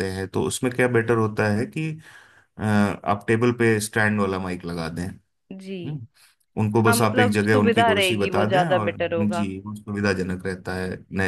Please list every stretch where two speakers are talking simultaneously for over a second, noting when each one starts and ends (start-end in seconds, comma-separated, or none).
6.9-9.5